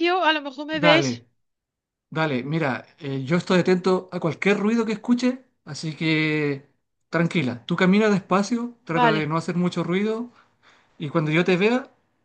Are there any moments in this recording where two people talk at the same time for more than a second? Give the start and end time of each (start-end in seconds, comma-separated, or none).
none